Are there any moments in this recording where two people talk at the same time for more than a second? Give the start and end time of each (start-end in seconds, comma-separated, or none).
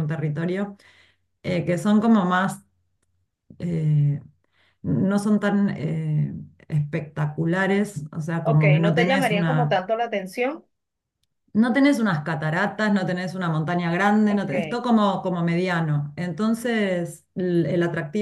8.4-9.8